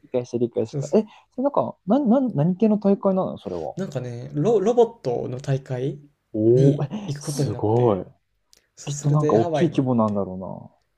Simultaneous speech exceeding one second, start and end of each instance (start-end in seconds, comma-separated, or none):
6.5-8.1, 8.8-10.2